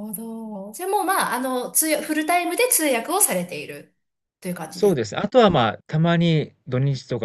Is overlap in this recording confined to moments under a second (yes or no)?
yes